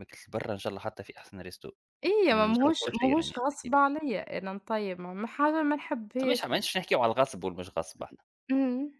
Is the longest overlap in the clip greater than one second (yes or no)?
yes